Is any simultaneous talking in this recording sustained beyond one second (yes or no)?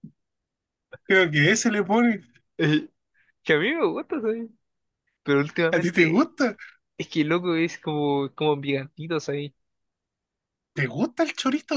no